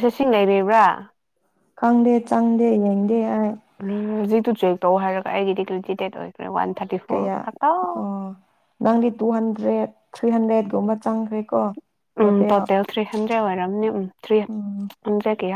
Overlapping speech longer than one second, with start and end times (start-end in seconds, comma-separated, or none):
none